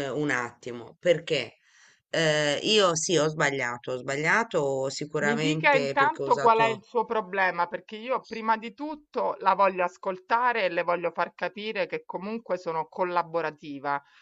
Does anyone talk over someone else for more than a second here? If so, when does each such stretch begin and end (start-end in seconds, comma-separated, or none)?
5.2-6.8